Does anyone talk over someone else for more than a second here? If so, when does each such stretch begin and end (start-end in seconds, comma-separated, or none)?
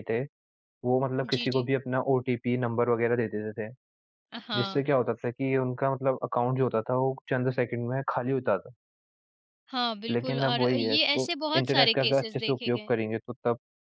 10.1-12.9